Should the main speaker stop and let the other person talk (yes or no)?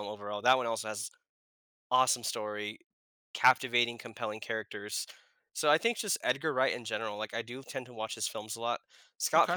no